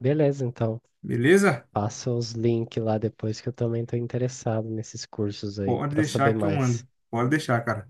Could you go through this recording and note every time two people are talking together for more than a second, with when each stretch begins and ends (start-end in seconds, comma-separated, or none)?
5.6-6.8